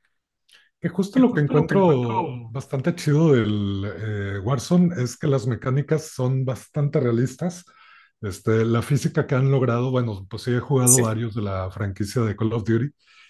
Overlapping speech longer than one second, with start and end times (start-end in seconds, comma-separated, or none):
1.1-2.5